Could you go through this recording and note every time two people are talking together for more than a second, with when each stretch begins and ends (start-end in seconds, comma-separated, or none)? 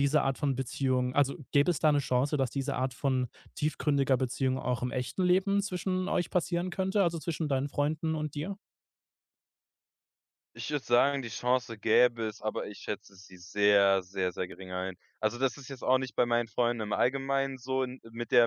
none